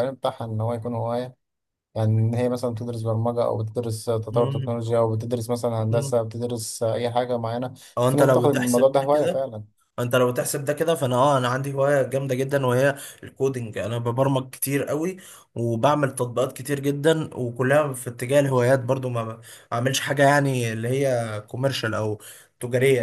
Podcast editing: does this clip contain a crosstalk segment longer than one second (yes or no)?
yes